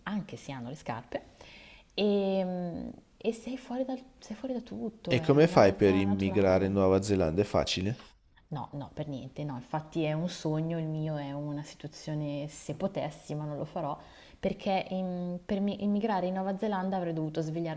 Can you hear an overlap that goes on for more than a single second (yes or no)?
yes